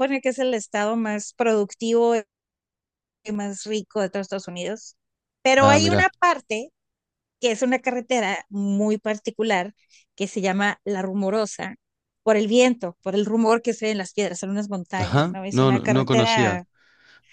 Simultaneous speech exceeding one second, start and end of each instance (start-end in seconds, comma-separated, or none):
15.0-16.6